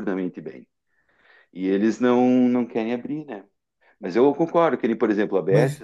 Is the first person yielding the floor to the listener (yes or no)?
no